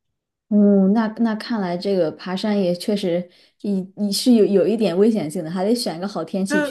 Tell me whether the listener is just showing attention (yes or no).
no